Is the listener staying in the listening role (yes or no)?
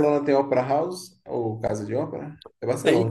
no